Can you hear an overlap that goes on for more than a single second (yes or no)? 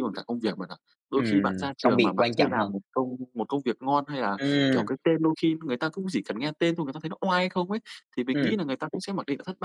yes